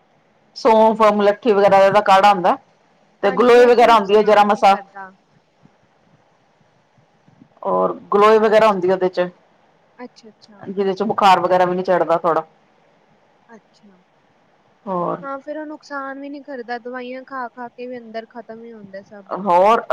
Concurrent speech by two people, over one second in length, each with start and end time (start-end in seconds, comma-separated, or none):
3.3-4.7